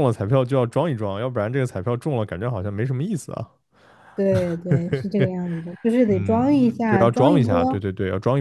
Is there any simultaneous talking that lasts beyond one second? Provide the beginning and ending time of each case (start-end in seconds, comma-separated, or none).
6.1-7.8